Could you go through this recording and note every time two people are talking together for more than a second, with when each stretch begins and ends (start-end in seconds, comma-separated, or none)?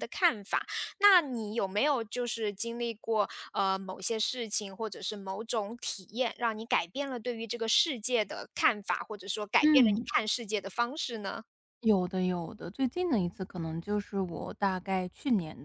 none